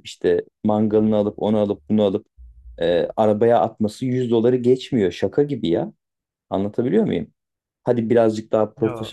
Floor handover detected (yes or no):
no